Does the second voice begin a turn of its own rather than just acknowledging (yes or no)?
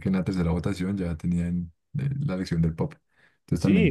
yes